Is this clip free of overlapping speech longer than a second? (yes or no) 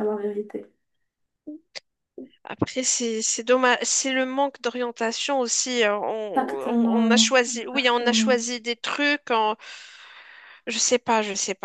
no